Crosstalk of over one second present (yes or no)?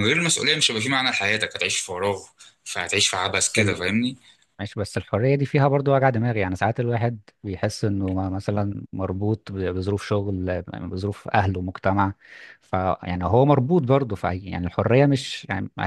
no